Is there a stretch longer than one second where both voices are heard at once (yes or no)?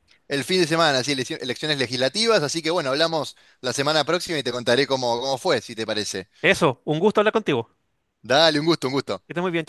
no